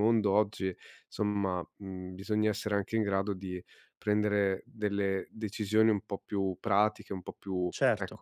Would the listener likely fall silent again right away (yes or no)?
no